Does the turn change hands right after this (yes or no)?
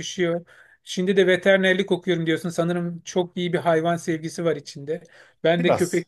no